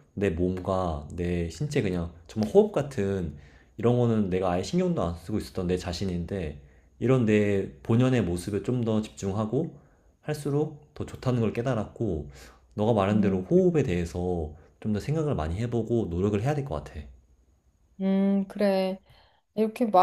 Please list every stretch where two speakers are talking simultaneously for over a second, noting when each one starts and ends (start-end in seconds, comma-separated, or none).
none